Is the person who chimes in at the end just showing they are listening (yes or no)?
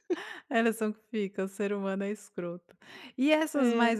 yes